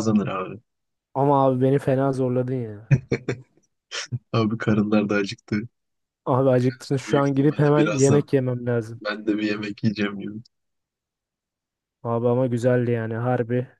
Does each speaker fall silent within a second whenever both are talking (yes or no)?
no